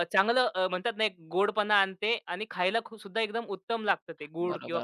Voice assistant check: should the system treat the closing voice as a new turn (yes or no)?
yes